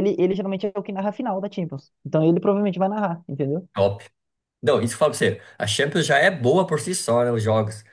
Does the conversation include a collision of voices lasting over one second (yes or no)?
no